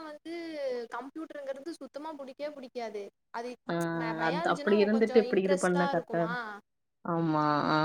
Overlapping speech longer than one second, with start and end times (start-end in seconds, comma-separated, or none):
4.3-6.3